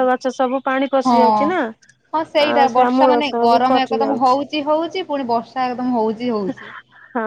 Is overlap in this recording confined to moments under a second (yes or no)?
no